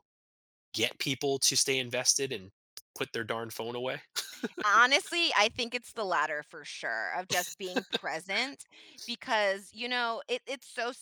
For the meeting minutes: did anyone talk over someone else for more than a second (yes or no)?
no